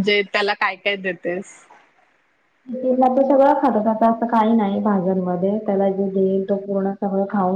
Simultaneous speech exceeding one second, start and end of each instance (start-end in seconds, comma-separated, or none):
none